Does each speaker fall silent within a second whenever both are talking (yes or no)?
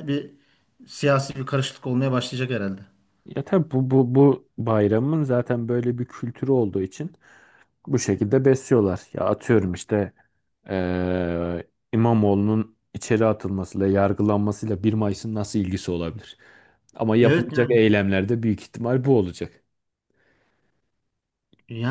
yes